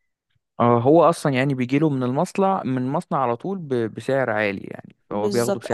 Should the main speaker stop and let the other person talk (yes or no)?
yes